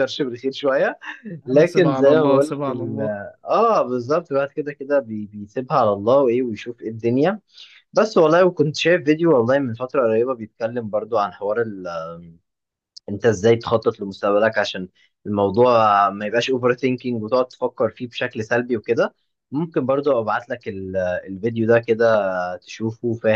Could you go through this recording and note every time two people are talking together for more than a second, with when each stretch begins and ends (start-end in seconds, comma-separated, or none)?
1.5-3.0